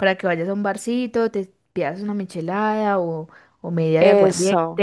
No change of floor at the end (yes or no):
yes